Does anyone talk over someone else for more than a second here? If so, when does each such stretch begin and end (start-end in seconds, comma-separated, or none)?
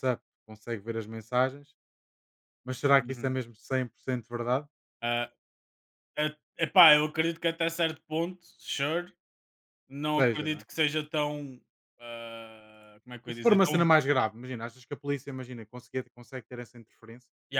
none